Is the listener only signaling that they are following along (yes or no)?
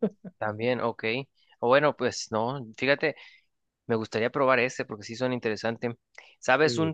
yes